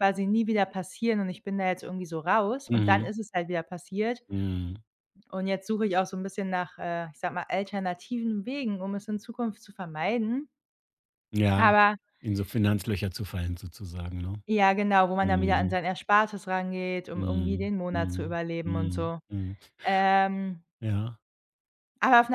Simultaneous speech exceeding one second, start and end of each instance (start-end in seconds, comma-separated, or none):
17.1-19.2